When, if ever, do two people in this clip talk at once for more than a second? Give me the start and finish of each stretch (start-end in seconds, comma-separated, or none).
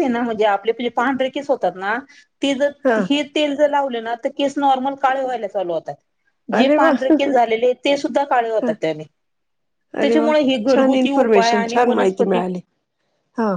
10.0-12.4